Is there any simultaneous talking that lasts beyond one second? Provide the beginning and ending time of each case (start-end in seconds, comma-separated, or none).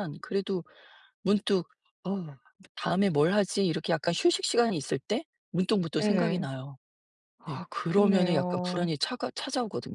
7.4-8.9